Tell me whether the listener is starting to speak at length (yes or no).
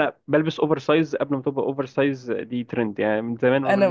no